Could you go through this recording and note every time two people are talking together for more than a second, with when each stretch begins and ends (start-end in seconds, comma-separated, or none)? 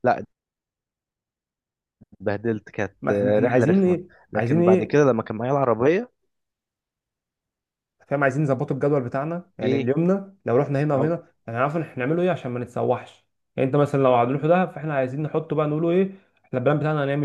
3.0-5.0